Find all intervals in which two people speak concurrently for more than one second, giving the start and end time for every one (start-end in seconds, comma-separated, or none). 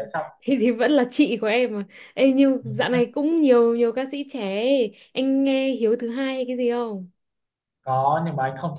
none